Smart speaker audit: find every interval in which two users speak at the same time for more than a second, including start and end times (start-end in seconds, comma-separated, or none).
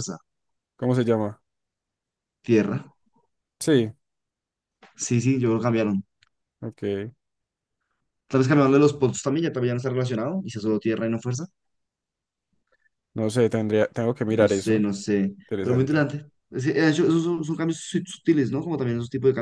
none